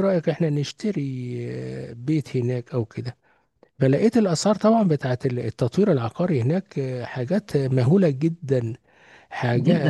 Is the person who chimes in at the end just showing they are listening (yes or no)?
no